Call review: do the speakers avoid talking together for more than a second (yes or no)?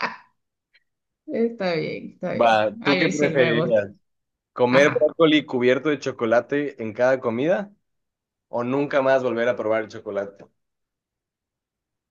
no